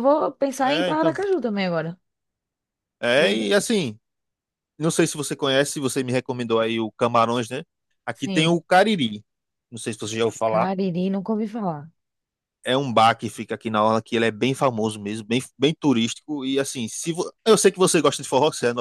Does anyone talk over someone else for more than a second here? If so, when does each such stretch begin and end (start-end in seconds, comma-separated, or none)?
none